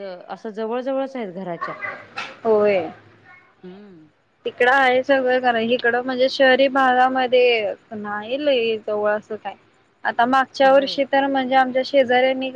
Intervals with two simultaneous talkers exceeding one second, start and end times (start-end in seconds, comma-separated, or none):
none